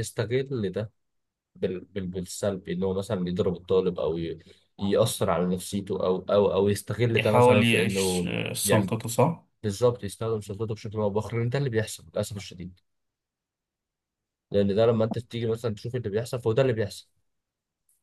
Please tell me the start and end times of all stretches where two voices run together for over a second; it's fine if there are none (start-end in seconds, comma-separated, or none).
7.2-8.9